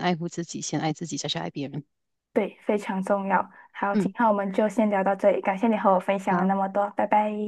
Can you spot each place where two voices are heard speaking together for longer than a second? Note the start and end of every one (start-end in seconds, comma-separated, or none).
none